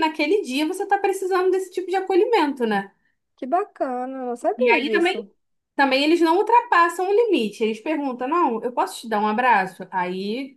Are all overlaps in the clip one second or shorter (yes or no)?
yes